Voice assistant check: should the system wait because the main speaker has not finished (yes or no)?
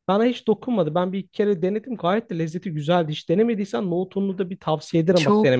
no